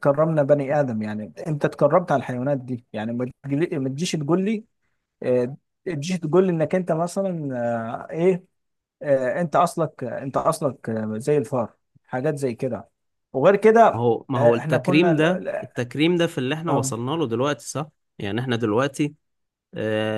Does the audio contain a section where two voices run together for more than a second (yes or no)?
yes